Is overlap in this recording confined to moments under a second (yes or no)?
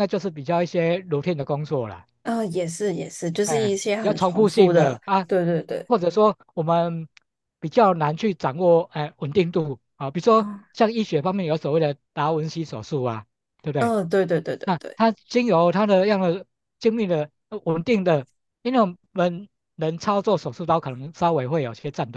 no